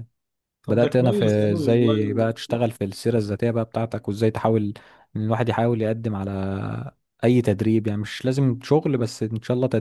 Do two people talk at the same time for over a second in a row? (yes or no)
yes